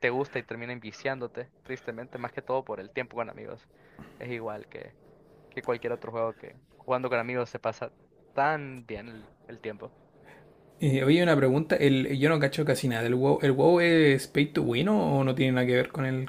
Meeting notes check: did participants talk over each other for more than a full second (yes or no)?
no